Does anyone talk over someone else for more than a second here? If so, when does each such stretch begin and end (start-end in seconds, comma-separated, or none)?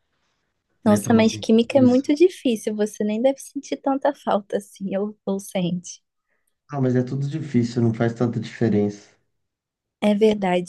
0.8-2.1